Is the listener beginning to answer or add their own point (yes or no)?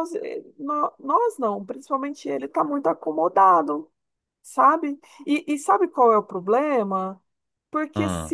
no